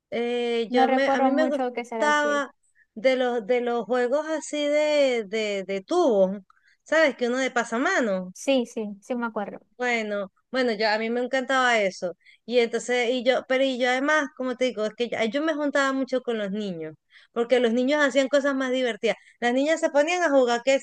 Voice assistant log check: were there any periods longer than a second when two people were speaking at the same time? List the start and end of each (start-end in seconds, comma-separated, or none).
0.7-2.4